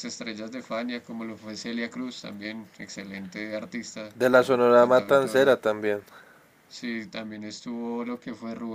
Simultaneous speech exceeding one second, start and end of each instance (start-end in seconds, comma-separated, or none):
4.1-5.6